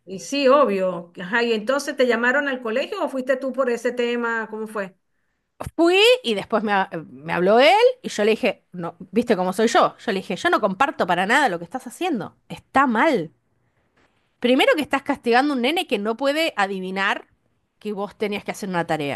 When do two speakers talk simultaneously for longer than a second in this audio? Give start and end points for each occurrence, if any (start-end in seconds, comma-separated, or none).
none